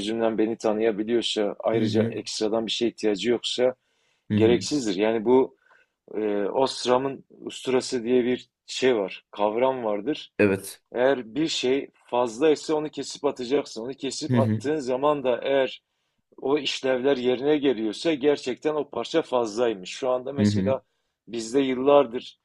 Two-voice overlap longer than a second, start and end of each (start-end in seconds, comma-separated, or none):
none